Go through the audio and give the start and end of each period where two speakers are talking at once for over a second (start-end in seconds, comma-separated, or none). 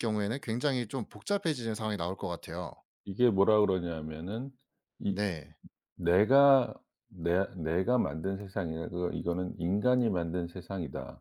none